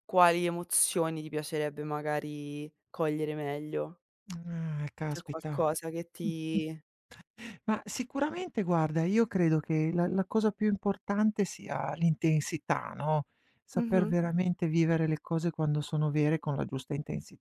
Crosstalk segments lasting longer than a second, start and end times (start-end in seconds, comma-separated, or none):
none